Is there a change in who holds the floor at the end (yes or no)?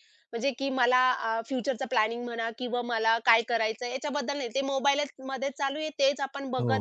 no